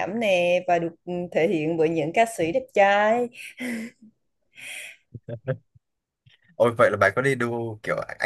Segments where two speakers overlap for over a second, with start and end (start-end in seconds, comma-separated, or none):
none